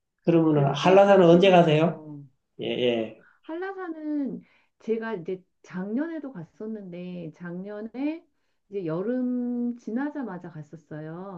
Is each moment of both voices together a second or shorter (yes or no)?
no